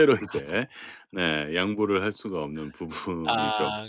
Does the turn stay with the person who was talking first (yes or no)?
no